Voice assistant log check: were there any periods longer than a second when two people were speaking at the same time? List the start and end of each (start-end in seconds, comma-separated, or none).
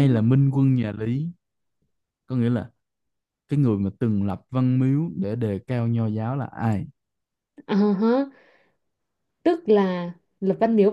none